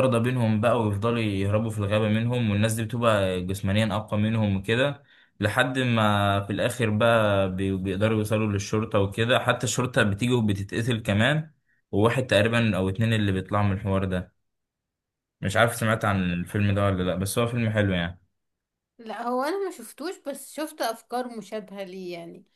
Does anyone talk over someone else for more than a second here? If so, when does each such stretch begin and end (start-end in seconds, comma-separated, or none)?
none